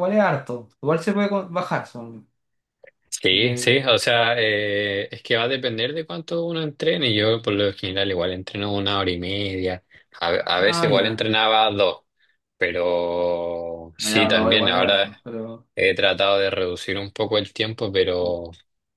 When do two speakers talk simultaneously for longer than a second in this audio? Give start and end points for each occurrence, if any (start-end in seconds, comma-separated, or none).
14.0-15.2